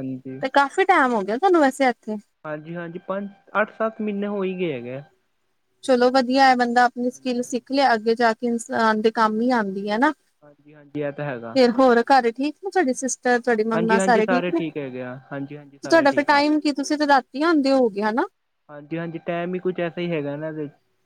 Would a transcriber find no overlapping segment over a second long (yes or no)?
yes